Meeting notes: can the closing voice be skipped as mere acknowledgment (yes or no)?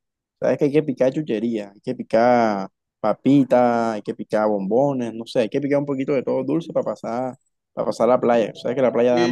no